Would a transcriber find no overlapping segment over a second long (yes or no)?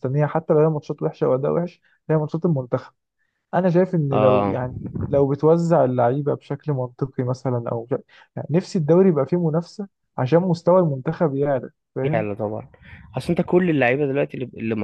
yes